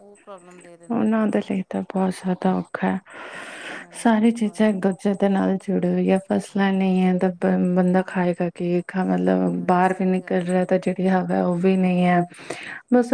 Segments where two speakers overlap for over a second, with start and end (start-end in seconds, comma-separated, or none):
9.3-10.9